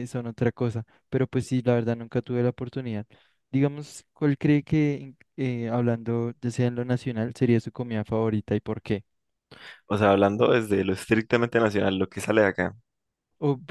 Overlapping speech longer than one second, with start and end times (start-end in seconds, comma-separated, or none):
none